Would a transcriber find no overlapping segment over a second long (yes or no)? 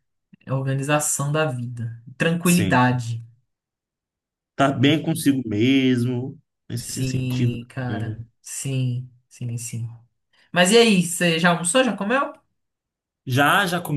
no